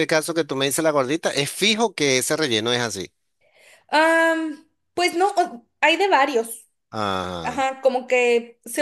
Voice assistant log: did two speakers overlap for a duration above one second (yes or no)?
no